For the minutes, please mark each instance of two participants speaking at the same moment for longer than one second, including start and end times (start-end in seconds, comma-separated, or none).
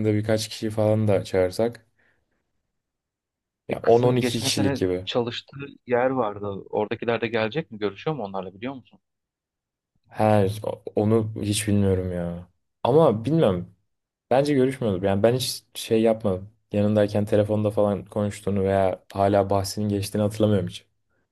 3.7-5.1